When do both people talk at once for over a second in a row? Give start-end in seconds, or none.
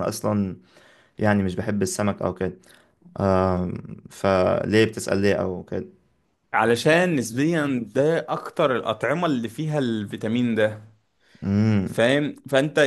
none